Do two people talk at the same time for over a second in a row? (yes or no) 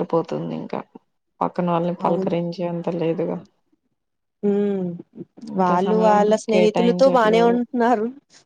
yes